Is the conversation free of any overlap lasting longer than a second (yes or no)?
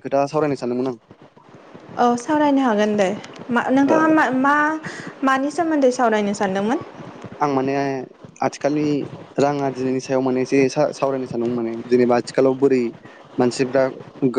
yes